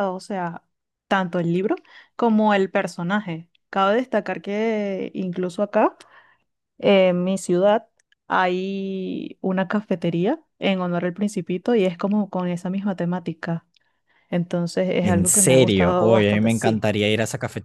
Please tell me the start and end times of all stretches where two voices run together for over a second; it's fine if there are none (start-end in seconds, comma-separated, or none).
15.0-16.9